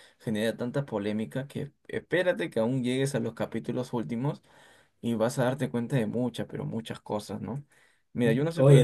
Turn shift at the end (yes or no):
no